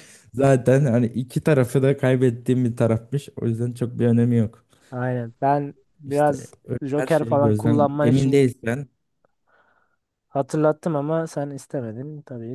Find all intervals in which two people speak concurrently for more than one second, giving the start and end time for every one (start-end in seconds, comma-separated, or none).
6.0-8.4